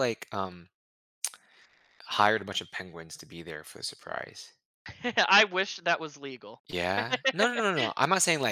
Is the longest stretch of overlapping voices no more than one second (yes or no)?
yes